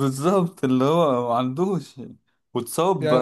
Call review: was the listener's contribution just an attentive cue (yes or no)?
yes